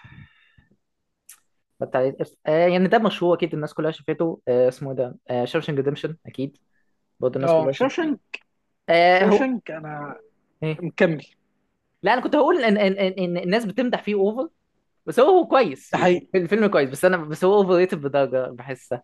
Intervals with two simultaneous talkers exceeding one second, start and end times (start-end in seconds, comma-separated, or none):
none